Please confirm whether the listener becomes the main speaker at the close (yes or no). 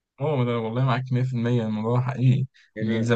yes